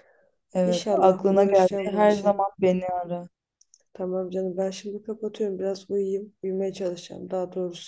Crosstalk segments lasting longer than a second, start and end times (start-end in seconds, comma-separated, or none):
0.6-2.5